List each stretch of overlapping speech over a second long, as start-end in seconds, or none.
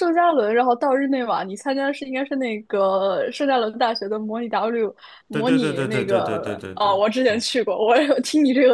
5.3-7.5